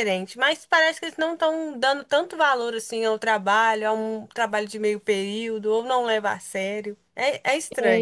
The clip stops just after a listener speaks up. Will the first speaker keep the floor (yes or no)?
no